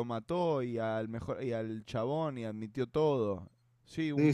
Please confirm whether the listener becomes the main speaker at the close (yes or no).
yes